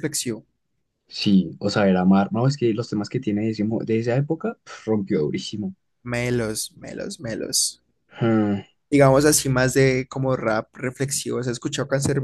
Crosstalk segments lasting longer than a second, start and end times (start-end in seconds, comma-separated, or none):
none